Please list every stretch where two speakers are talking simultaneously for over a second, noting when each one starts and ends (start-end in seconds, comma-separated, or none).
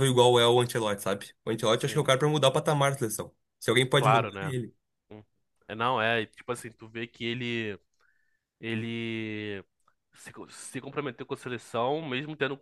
none